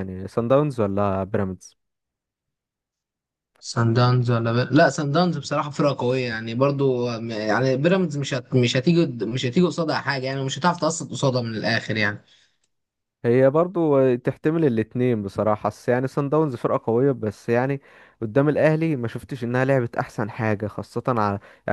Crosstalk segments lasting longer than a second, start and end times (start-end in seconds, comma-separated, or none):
none